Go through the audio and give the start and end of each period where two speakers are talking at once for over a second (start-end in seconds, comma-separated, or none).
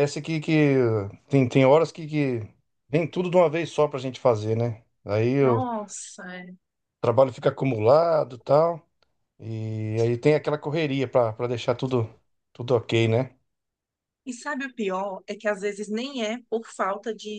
none